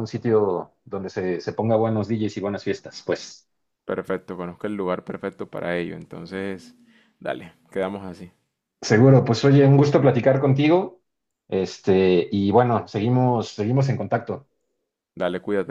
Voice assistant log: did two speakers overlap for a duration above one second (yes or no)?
no